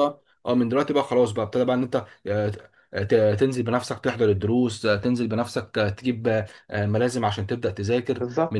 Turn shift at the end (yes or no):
no